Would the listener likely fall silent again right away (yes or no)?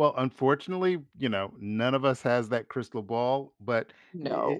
yes